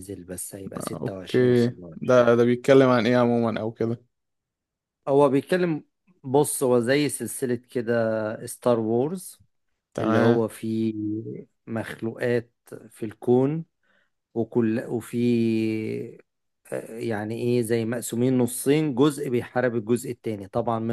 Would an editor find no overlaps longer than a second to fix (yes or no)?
no